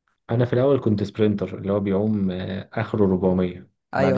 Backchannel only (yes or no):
yes